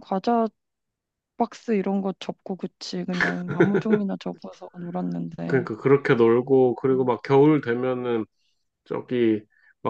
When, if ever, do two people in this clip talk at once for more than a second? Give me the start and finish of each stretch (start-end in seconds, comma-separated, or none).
none